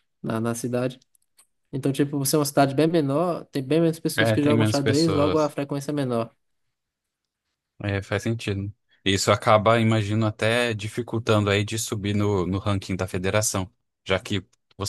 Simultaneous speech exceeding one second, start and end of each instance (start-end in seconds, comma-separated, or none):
4.2-5.5